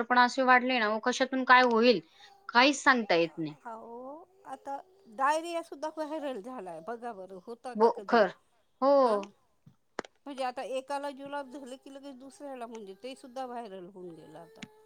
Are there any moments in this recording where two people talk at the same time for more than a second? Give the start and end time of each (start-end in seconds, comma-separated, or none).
none